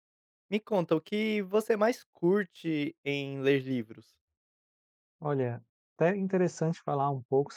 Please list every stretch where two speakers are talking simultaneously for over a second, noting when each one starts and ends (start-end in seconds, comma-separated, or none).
none